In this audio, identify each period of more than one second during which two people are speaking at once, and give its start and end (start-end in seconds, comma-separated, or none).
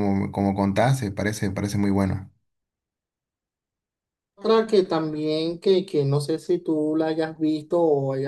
none